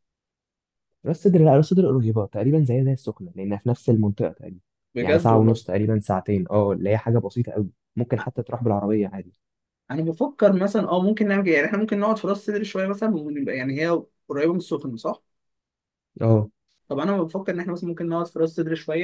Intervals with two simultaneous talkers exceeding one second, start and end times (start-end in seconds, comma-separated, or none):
none